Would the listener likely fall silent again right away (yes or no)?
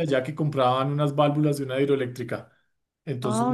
yes